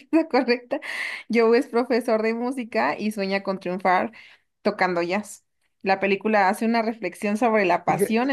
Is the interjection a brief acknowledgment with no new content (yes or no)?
yes